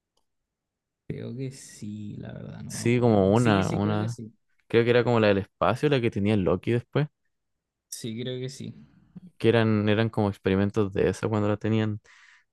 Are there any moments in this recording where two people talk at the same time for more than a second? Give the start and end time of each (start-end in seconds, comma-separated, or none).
2.7-4.2